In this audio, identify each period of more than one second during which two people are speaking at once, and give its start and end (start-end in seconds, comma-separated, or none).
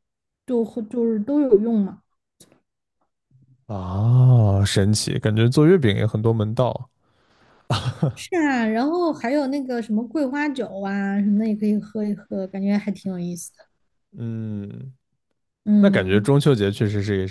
none